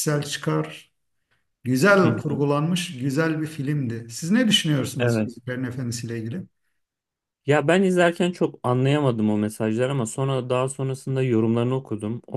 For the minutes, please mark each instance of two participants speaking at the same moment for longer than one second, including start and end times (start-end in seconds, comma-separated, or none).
none